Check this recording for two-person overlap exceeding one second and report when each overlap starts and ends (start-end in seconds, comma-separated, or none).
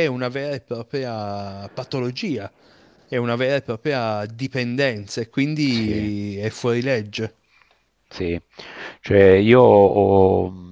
none